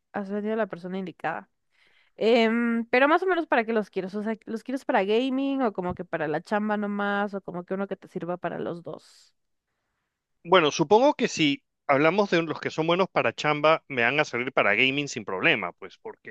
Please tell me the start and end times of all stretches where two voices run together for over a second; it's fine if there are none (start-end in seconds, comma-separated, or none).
none